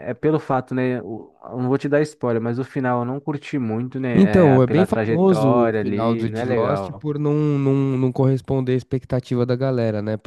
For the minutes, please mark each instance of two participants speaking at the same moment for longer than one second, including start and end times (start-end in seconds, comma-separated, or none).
4.2-7.0